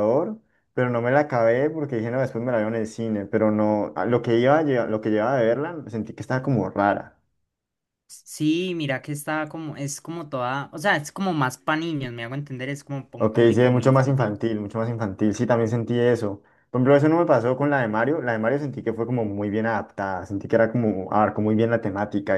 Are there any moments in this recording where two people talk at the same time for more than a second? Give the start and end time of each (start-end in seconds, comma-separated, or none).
13.2-14.4